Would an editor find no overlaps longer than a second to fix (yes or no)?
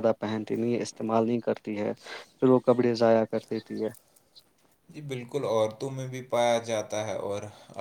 yes